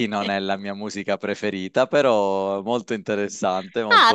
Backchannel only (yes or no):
no